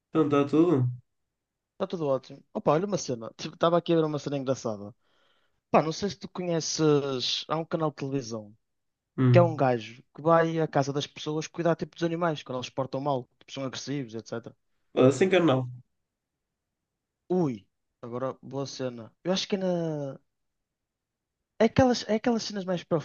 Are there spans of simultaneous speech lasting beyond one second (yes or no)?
no